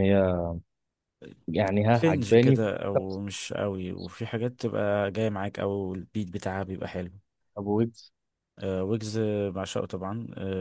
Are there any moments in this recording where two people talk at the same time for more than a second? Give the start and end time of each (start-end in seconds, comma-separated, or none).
none